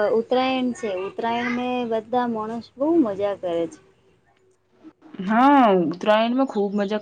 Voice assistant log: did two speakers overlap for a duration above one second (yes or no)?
no